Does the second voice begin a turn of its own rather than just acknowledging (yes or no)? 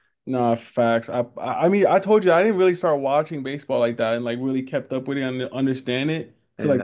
no